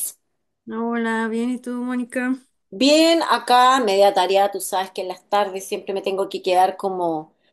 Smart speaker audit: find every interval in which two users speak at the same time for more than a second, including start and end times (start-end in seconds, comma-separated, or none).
none